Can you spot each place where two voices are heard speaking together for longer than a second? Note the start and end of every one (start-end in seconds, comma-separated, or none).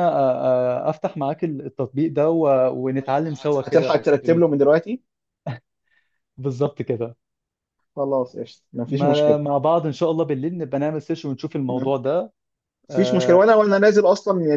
3.0-4.5